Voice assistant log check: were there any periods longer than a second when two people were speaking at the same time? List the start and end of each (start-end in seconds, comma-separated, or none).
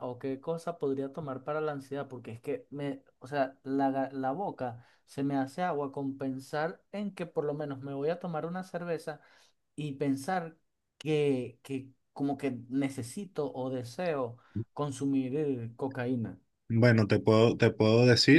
none